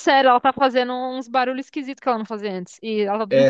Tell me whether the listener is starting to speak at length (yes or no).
yes